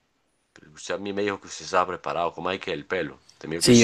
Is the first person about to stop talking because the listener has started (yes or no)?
yes